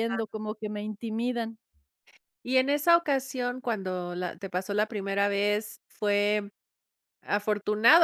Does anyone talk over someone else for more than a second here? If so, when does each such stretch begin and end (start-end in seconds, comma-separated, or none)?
none